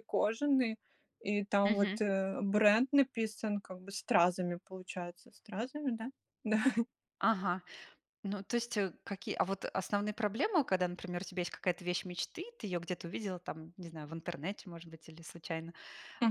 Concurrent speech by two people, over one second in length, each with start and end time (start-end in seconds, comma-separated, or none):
none